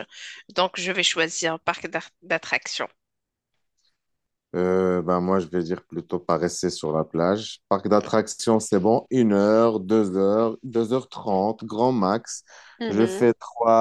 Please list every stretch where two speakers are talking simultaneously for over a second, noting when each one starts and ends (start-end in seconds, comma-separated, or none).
none